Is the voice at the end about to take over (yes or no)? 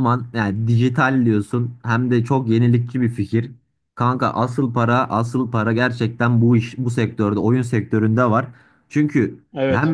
no